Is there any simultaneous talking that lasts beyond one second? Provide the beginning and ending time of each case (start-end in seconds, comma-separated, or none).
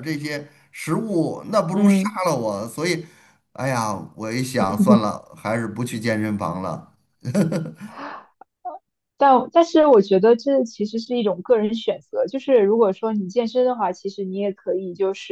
none